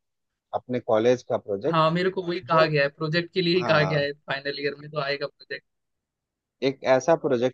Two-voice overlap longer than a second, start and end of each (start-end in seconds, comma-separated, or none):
none